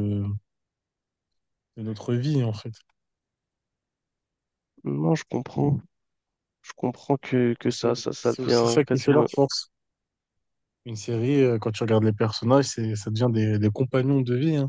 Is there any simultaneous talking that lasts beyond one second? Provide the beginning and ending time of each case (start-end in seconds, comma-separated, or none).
7.6-9.3